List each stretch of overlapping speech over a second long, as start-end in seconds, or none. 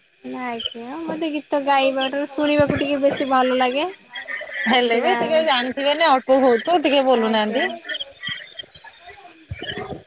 none